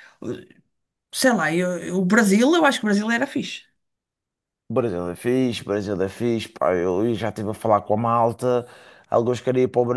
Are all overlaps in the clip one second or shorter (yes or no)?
yes